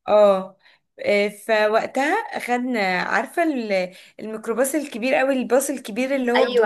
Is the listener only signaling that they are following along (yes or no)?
no